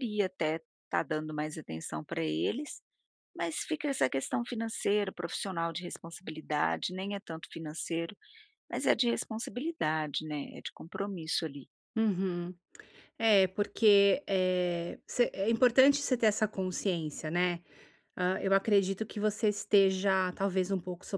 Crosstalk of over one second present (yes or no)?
no